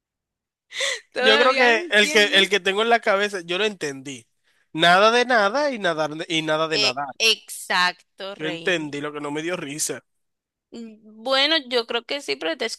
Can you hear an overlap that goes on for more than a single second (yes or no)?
yes